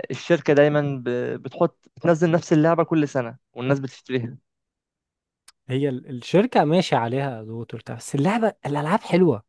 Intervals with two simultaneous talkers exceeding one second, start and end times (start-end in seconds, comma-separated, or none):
none